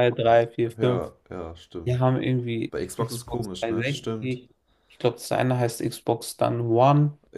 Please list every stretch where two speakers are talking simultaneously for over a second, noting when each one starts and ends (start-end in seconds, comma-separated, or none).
2.7-4.4